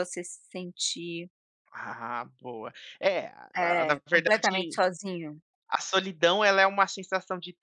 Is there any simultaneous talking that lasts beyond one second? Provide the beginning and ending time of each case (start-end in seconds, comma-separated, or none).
3.5-4.8